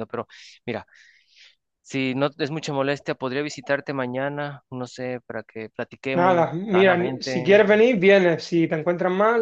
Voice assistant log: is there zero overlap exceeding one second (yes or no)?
no